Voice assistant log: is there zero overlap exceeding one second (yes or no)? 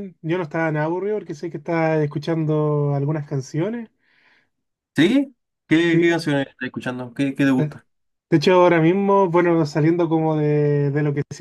yes